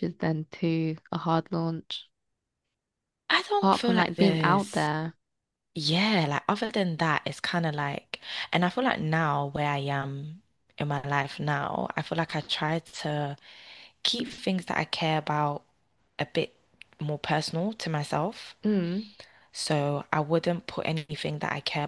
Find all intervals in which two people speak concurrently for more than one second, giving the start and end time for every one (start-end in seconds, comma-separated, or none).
3.6-4.9